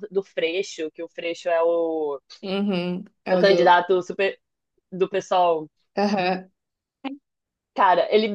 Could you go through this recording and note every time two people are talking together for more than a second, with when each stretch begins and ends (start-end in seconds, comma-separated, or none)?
none